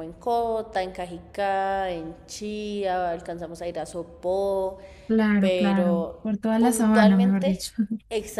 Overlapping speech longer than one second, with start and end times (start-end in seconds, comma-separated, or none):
5.4-7.5